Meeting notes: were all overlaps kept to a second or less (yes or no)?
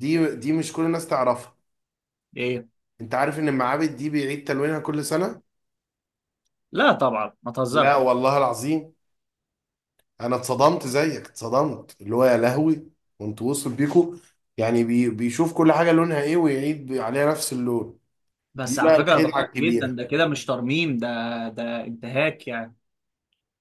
no